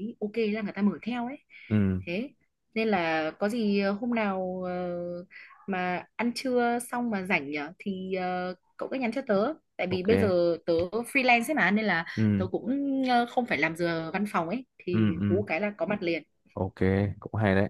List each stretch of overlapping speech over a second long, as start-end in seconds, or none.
none